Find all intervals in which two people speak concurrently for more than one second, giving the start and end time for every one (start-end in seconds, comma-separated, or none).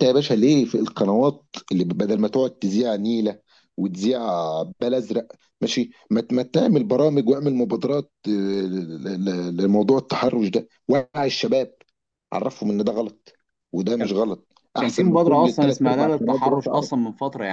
14.8-16.9